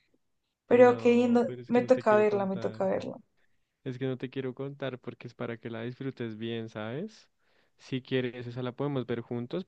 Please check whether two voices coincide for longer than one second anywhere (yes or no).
yes